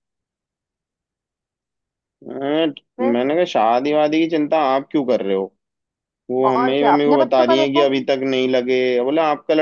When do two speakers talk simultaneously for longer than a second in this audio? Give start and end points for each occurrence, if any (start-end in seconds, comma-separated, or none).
6.5-7.9